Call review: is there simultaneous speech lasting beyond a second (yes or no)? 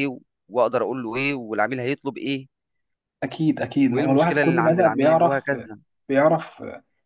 yes